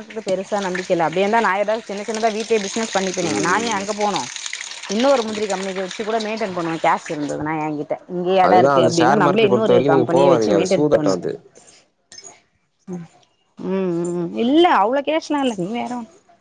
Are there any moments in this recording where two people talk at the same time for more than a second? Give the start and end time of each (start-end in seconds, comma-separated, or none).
8.5-10.3